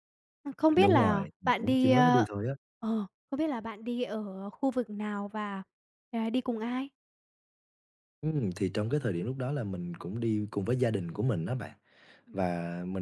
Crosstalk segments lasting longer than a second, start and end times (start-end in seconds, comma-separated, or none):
0.8-2.3